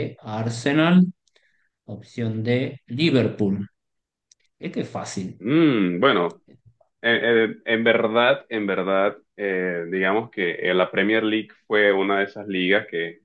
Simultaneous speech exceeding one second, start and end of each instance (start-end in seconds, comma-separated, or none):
none